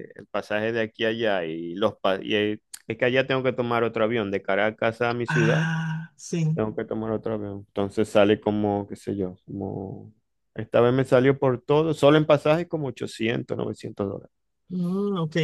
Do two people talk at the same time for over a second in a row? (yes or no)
no